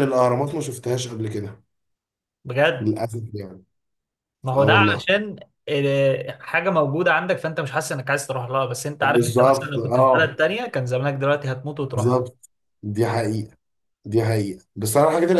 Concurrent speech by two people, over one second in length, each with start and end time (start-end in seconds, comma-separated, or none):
9.0-10.4